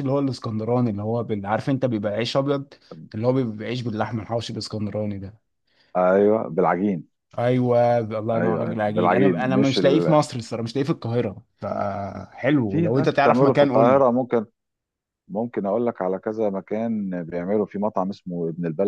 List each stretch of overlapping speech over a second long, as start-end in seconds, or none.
8.3-10.2, 12.7-14.0